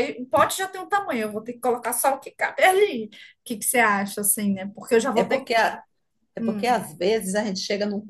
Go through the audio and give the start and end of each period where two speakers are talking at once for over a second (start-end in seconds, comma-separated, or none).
none